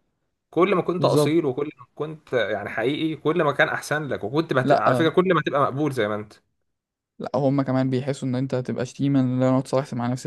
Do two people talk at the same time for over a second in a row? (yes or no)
no